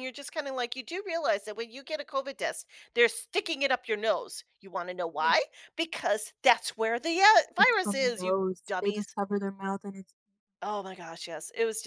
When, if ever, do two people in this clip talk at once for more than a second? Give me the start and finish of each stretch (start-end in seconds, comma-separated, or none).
7.6-9.1